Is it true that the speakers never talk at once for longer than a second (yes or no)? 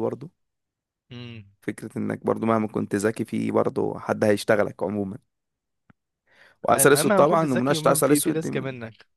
no